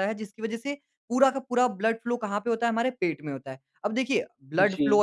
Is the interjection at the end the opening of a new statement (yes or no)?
no